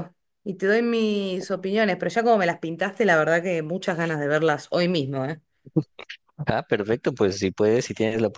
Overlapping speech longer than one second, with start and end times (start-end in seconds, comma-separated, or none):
none